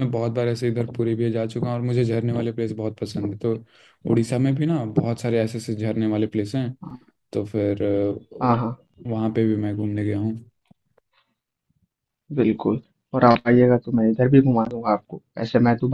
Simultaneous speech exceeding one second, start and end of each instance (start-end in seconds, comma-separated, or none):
none